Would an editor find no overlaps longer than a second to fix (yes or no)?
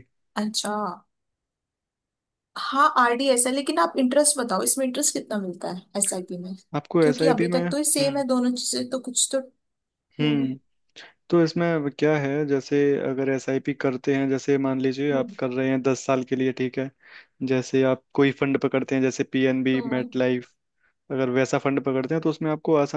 no